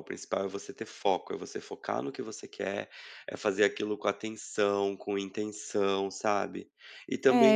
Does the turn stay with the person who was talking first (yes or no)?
no